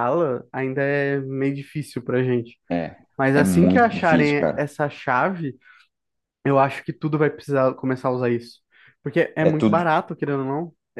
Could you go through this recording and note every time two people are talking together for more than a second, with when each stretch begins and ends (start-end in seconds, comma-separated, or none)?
3.3-4.6